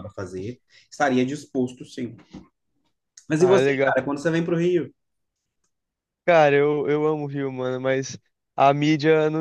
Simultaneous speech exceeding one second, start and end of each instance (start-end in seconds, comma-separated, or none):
none